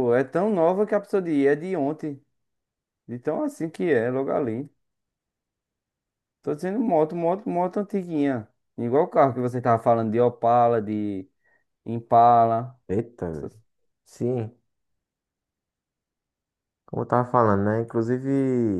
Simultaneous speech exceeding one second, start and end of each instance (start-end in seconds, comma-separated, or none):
none